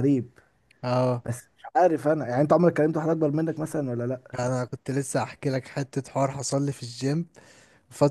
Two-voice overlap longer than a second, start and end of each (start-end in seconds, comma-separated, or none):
none